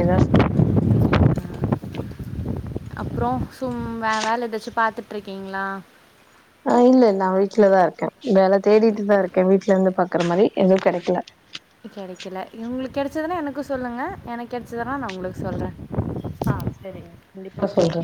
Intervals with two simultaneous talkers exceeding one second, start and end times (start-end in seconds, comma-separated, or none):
none